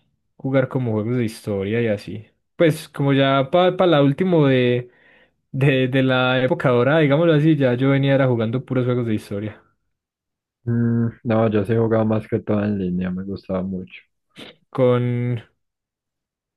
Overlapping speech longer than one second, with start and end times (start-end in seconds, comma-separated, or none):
none